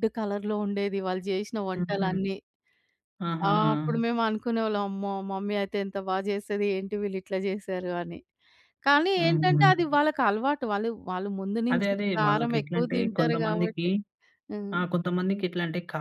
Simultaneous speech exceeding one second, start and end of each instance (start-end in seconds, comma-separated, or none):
11.7-13.8